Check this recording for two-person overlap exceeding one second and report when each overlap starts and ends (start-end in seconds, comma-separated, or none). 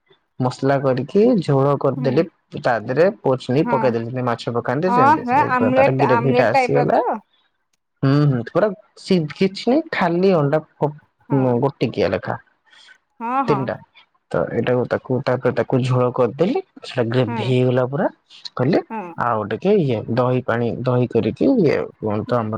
4.9-7.0